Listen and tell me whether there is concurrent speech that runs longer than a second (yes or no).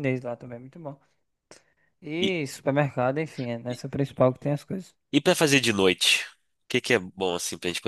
no